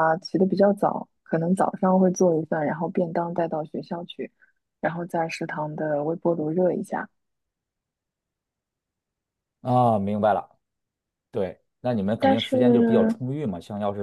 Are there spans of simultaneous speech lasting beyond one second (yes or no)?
no